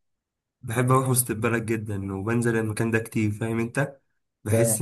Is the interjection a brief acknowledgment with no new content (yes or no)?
yes